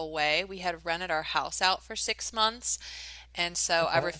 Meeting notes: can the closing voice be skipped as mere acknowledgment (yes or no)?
yes